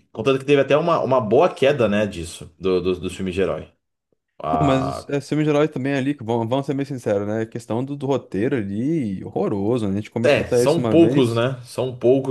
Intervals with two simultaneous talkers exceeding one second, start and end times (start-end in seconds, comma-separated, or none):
10.2-11.4